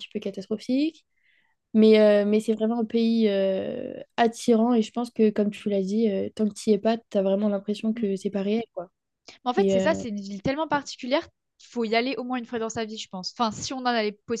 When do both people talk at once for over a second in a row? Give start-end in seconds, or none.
none